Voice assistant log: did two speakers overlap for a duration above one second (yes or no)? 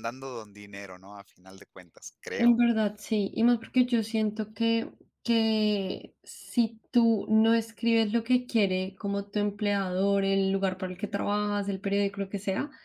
no